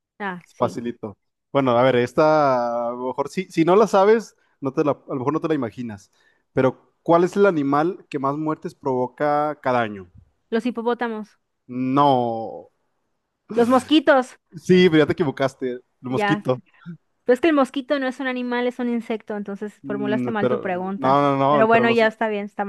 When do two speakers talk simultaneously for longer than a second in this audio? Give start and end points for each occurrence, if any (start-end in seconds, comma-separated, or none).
19.8-22.1